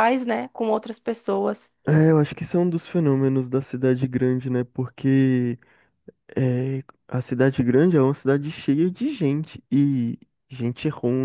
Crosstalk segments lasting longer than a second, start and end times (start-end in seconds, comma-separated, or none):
none